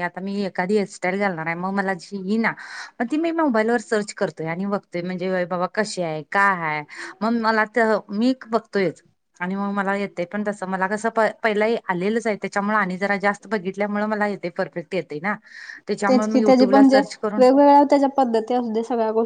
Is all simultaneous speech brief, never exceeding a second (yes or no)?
yes